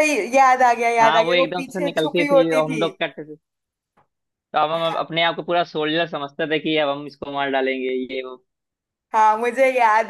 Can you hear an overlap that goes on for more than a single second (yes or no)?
yes